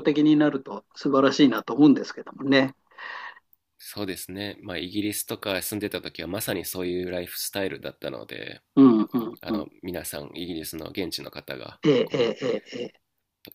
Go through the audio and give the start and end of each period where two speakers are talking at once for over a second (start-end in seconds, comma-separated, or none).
none